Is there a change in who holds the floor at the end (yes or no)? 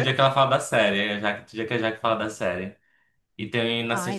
no